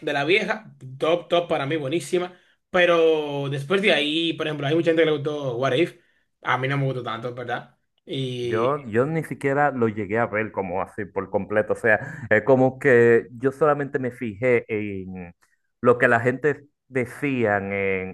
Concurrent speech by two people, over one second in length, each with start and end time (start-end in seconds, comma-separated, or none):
none